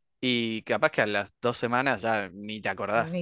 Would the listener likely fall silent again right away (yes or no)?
no